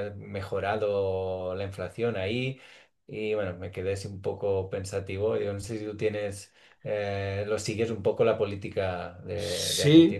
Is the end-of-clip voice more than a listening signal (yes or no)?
yes